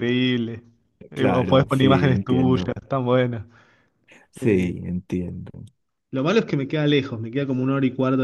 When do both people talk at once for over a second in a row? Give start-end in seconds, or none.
1.1-2.8